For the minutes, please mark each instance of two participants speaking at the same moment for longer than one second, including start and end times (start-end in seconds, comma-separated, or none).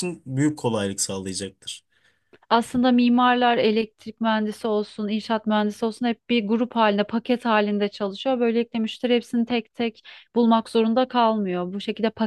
none